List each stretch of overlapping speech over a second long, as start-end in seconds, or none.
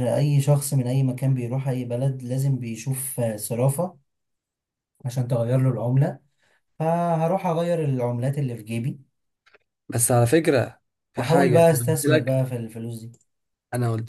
11.2-12.4